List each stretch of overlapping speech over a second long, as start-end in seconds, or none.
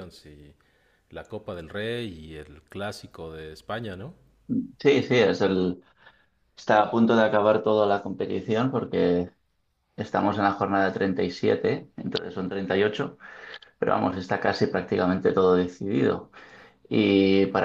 none